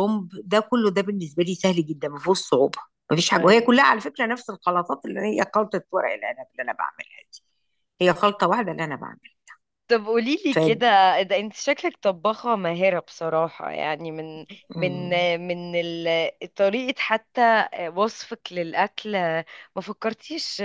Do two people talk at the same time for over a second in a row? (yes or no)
no